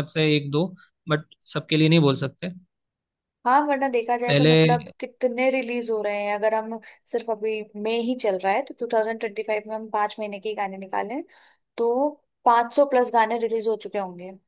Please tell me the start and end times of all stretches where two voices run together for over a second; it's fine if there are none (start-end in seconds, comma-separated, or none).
none